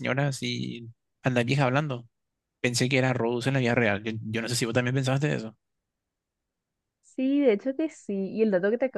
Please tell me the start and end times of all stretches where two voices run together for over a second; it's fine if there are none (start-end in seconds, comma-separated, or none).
none